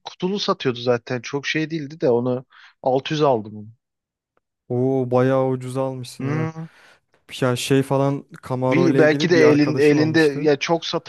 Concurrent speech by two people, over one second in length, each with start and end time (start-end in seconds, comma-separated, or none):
8.7-10.5